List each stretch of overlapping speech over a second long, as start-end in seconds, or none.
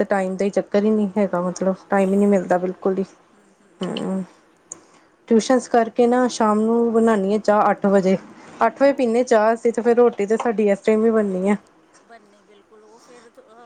1.5-3.0